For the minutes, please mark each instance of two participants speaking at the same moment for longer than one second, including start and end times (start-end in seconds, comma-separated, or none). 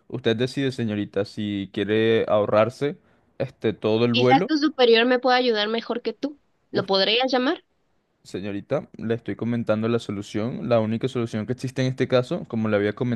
none